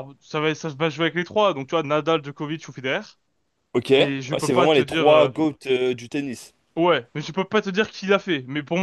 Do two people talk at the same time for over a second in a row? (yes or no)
yes